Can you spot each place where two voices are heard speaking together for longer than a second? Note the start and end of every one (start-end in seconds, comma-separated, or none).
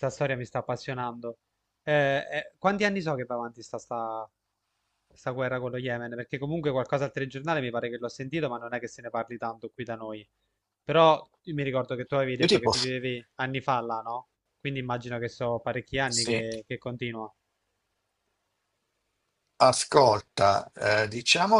none